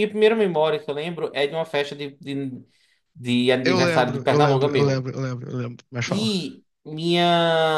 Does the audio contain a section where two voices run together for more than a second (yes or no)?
yes